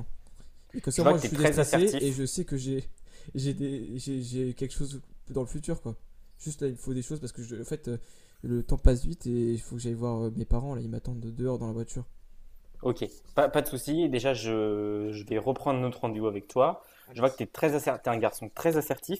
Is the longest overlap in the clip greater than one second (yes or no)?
yes